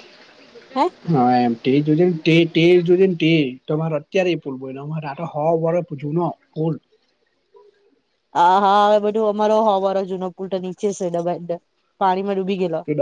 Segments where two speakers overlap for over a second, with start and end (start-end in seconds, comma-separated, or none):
none